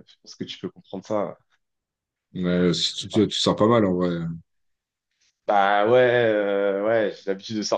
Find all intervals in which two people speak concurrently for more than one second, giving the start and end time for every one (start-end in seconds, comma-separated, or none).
none